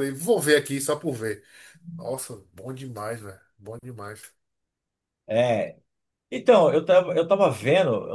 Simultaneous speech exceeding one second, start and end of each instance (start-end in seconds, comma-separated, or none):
none